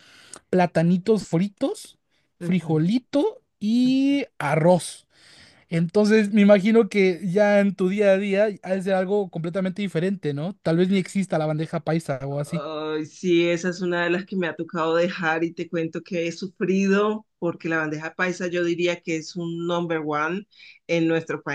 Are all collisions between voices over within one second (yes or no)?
yes